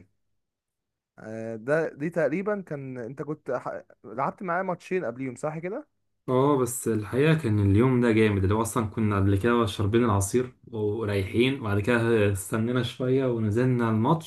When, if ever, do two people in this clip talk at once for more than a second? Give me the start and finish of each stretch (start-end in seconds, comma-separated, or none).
none